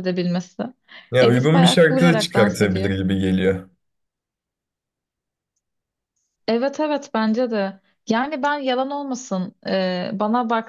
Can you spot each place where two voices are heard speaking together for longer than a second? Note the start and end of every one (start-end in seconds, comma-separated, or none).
1.2-2.9